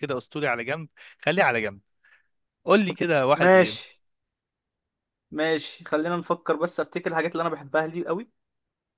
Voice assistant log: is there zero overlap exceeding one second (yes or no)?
yes